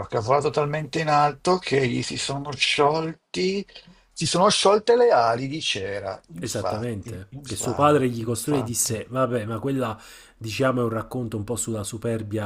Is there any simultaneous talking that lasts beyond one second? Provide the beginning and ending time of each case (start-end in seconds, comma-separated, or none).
6.4-9.0